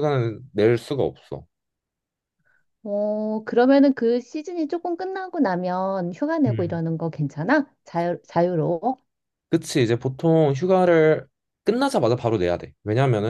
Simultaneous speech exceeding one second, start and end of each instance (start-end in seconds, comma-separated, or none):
none